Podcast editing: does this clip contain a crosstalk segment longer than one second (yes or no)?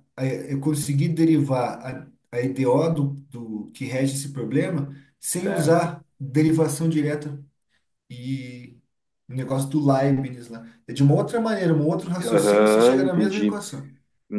yes